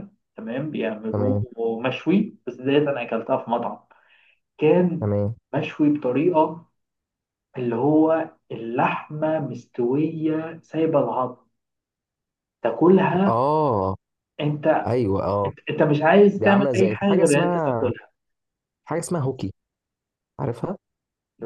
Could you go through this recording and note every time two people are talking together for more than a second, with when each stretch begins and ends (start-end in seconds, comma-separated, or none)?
16.4-17.9